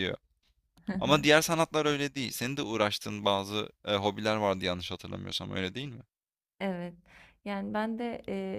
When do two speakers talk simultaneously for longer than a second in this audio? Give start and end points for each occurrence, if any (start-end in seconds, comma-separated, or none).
none